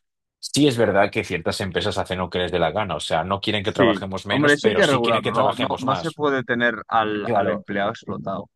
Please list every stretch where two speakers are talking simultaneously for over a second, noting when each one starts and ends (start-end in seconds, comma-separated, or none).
3.6-6.2